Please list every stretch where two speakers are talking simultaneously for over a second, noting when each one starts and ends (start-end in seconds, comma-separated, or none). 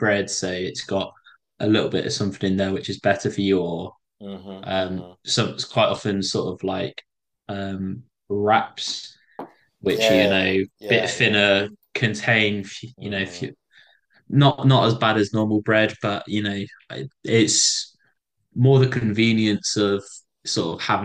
9.9-11.4